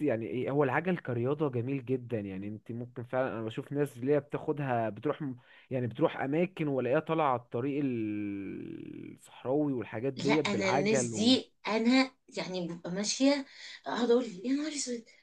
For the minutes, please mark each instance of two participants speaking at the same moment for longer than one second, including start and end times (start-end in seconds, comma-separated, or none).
10.2-11.4